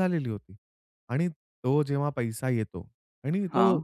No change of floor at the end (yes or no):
yes